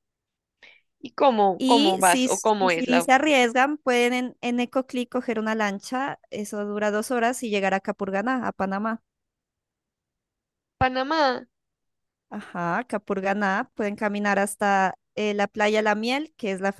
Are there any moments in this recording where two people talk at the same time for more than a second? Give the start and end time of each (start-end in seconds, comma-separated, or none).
1.6-3.0